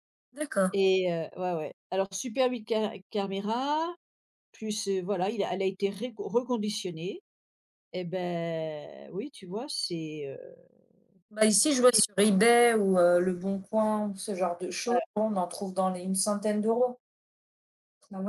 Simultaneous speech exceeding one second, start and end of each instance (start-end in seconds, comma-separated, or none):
none